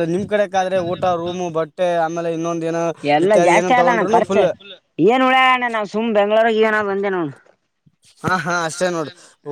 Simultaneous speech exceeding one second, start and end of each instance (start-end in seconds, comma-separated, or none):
none